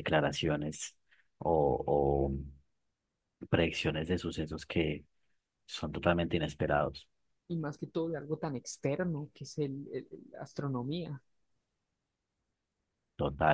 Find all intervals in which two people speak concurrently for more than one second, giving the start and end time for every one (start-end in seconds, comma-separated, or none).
none